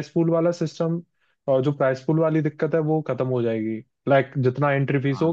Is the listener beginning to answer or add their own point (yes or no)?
no